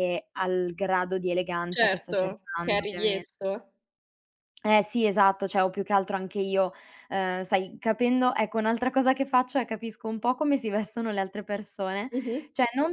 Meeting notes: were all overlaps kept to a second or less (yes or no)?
no